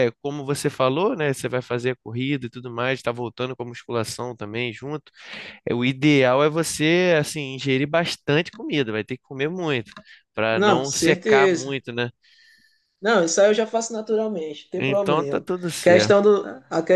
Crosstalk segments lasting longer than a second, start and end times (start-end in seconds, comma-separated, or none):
10.5-11.8, 14.8-16.2